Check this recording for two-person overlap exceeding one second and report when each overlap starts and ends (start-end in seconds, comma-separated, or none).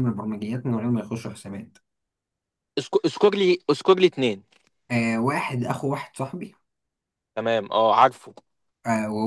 none